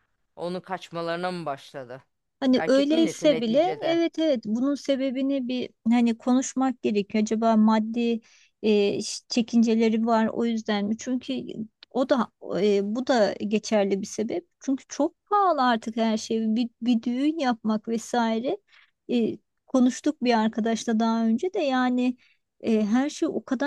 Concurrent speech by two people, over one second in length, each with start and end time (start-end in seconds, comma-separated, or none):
2.6-4.0